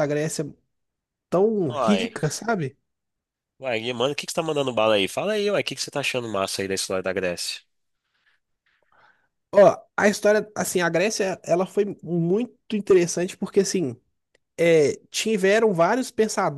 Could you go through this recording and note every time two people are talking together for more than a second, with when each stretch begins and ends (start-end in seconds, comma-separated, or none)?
none